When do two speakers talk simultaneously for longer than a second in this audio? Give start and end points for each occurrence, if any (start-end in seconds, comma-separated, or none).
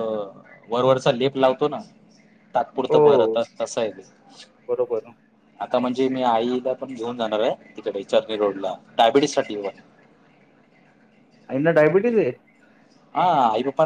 none